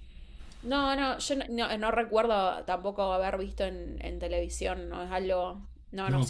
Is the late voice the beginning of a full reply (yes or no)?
no